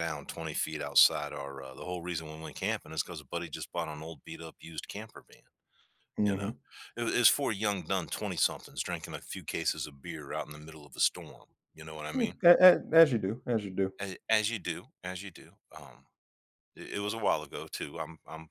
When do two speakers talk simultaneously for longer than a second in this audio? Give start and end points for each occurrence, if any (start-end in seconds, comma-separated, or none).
none